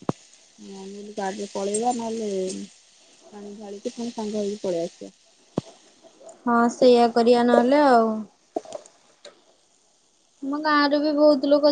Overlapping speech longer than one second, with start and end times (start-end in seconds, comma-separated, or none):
none